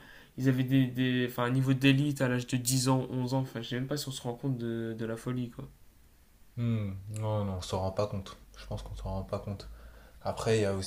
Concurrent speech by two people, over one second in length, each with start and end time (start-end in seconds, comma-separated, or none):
none